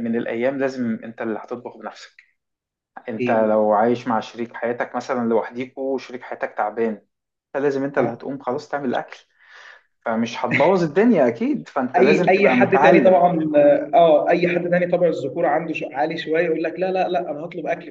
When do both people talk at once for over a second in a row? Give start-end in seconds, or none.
11.9-13.3